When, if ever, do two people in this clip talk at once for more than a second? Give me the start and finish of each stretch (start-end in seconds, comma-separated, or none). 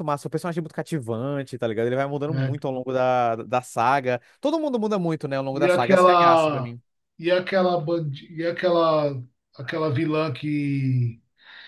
5.5-6.7